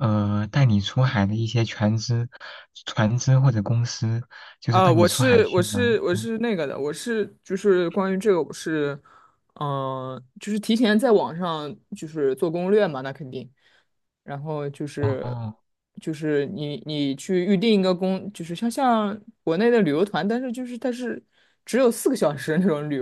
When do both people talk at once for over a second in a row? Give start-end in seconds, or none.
4.7-6.3